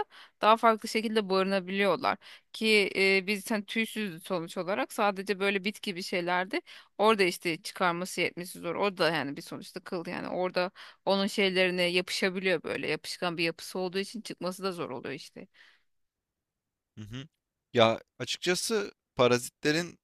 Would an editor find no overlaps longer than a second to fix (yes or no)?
yes